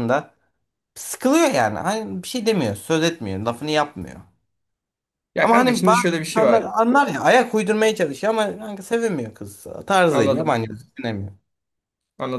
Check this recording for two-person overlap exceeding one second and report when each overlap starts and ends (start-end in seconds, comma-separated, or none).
5.4-6.7